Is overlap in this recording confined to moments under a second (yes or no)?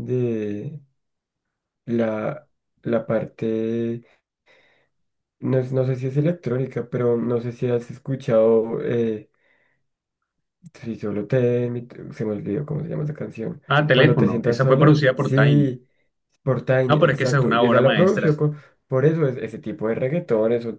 no